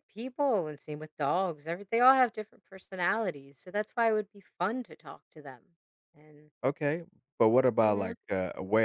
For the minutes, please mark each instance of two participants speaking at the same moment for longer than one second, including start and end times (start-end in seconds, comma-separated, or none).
none